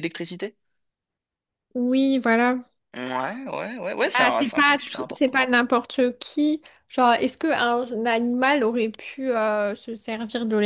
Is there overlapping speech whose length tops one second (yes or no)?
yes